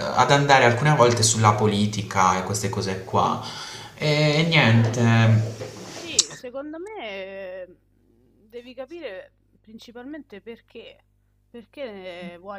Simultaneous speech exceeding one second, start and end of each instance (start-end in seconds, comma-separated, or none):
none